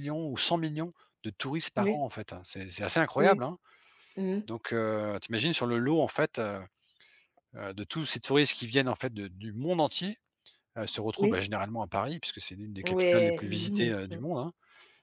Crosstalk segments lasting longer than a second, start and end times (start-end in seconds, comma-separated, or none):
12.8-14.2